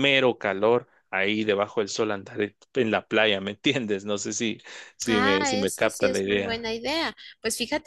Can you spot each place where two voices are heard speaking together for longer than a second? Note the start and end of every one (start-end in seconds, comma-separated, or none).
5.1-6.7